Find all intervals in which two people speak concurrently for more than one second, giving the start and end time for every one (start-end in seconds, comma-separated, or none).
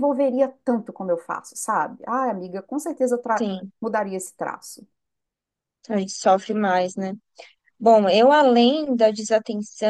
none